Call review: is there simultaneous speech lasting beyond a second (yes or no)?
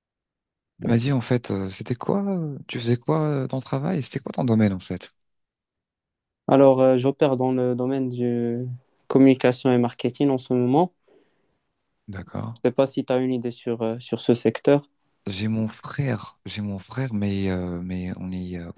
no